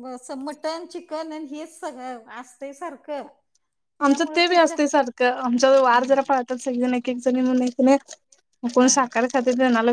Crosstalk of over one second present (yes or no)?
yes